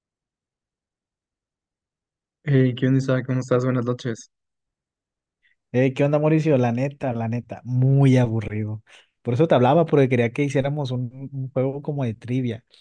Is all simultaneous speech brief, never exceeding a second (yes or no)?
yes